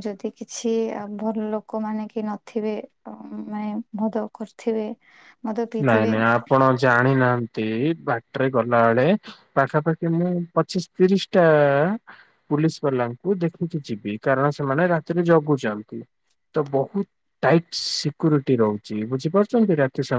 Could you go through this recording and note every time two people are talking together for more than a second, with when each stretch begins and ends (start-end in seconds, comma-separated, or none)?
none